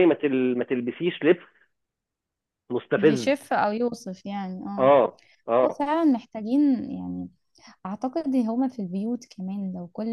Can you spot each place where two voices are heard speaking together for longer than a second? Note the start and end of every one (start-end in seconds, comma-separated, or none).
none